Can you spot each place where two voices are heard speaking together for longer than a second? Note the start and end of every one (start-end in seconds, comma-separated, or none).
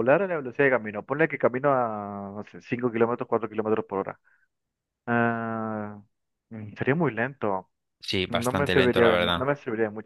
8.3-9.5